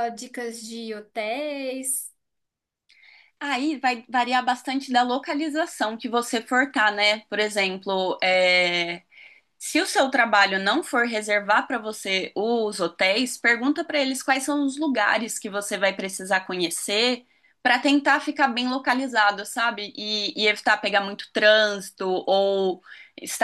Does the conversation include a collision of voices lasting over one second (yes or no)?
no